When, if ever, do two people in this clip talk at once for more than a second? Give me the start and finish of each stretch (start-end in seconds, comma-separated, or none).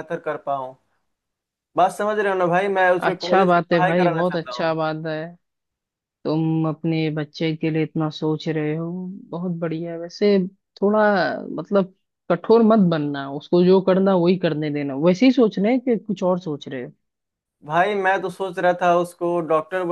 3.0-4.8